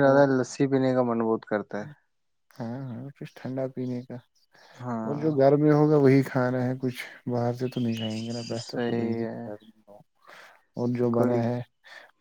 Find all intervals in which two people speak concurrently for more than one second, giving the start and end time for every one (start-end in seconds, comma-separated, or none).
7.9-9.5